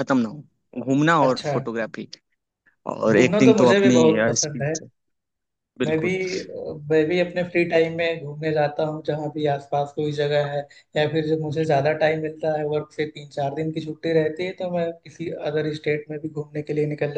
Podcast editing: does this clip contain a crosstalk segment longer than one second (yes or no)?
yes